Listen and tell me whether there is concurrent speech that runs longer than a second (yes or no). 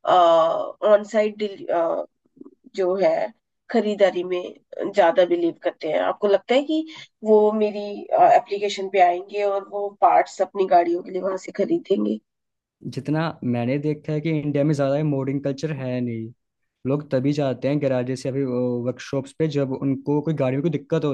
no